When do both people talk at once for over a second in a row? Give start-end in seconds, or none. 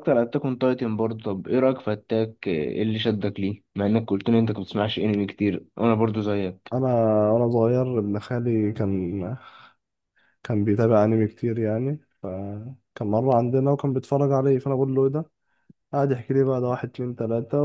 none